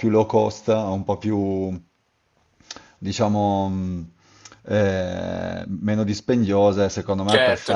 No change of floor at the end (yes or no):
no